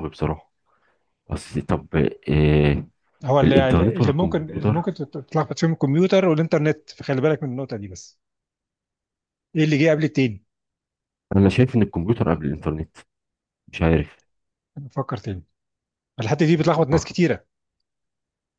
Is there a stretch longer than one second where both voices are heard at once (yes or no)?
yes